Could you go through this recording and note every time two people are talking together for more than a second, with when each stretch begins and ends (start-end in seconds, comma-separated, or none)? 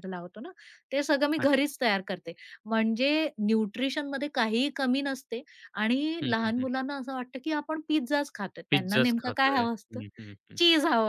8.7-10.0